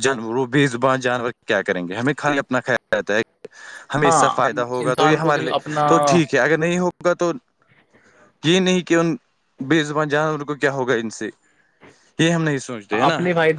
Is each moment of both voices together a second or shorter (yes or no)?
no